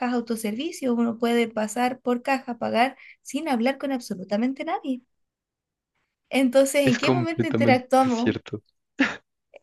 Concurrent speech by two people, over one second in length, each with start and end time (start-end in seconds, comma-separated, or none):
6.8-8.4